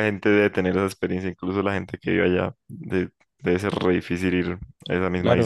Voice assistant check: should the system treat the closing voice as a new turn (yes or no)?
yes